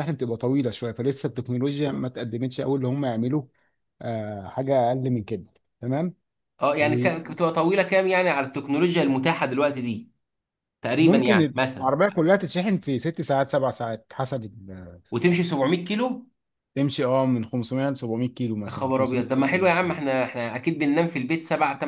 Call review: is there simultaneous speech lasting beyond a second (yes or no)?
yes